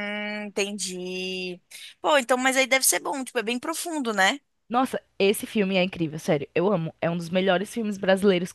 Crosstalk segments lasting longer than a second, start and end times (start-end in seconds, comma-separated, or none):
none